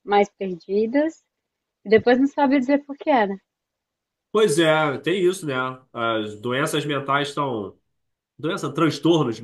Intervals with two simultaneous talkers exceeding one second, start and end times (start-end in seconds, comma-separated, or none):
none